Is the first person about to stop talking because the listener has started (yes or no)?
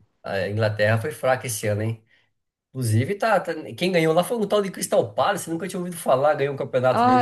yes